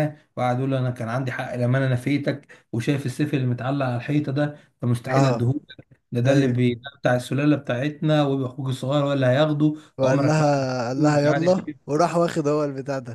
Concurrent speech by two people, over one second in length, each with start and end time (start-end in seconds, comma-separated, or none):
10.0-11.9